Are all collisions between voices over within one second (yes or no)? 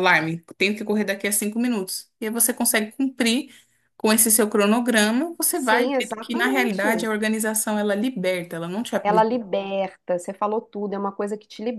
no